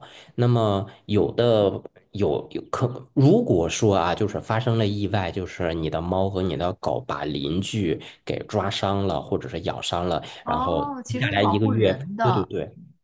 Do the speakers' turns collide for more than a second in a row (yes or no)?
yes